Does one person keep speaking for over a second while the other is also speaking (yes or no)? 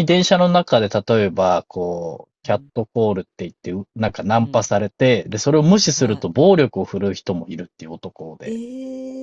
no